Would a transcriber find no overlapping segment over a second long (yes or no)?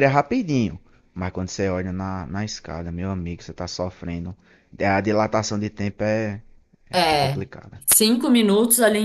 yes